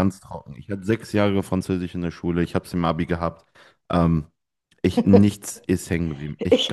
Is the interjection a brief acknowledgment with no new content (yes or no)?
no